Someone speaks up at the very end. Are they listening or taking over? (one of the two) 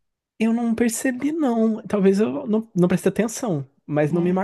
listening